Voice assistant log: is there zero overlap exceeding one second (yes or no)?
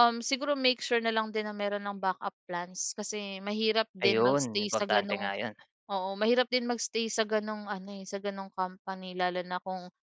no